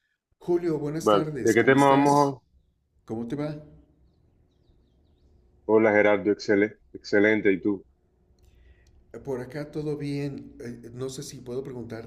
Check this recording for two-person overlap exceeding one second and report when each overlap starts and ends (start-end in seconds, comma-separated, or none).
1.0-2.4